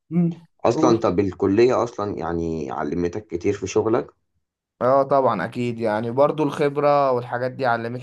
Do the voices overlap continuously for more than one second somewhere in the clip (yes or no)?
no